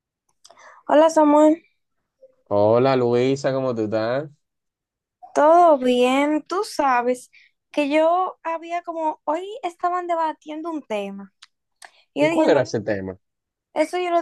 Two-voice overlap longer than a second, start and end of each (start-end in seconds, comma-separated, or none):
none